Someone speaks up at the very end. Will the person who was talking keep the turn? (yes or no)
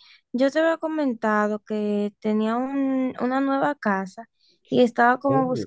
yes